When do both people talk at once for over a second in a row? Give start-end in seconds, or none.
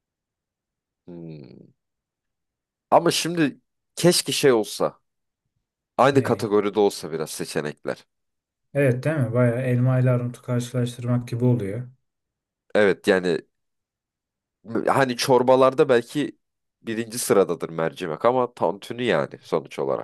none